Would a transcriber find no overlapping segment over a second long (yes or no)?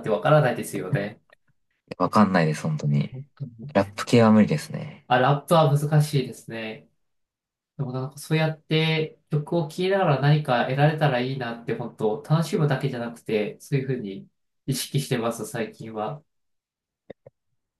yes